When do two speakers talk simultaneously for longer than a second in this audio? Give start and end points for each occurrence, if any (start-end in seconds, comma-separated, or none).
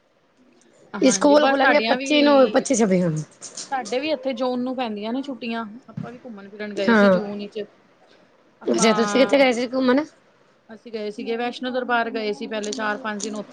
1.1-2.6